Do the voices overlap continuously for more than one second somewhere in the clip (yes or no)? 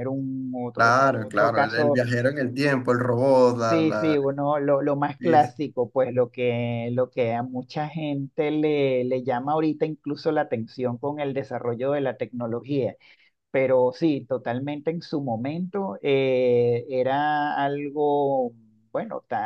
yes